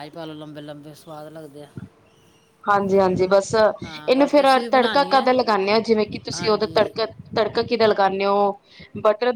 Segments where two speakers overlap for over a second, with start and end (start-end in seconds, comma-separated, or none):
3.8-5.3